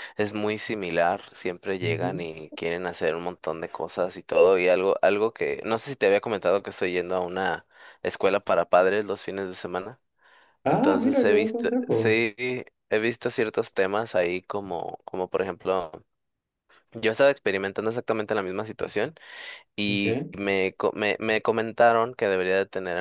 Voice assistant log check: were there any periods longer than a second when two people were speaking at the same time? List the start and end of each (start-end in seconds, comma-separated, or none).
10.7-12.2